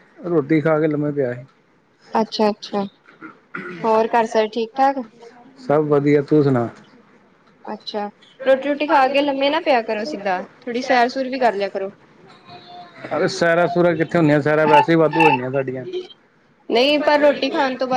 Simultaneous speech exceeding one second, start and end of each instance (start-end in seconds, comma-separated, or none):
none